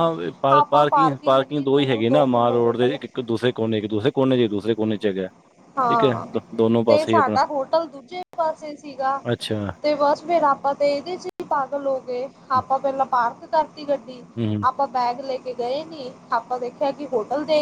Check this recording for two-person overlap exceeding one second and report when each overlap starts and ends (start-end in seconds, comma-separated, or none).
0.5-3.0